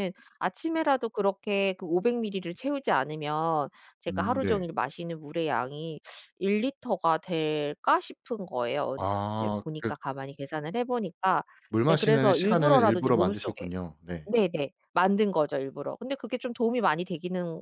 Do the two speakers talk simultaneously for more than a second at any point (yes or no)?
yes